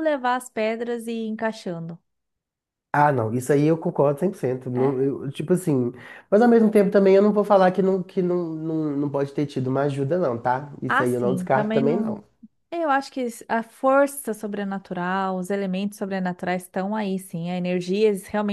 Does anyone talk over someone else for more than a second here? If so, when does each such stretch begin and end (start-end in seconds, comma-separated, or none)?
10.9-12.2